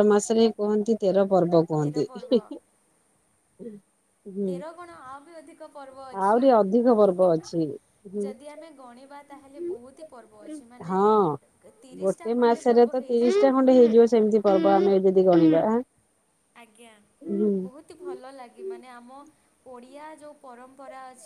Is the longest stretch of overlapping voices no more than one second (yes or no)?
no